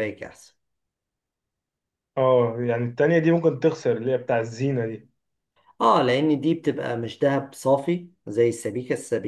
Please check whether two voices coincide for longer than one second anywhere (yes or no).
no